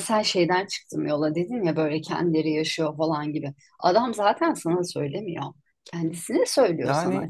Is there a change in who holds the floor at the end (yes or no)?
yes